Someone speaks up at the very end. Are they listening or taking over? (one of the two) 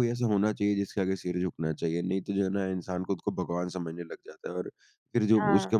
listening